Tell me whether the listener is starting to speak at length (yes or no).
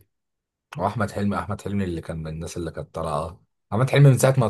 no